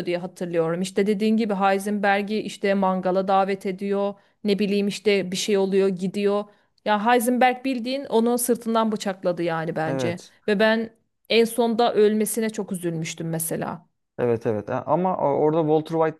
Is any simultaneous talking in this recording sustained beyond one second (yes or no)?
no